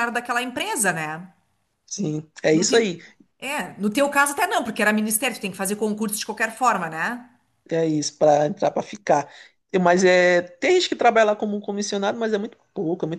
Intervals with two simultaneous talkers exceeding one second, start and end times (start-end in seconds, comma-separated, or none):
none